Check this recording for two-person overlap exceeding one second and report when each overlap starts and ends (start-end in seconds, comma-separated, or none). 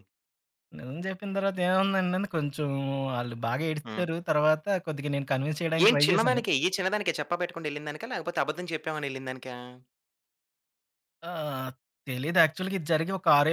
none